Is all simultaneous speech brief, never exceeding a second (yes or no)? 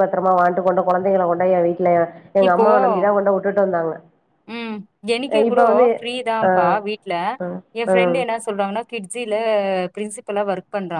yes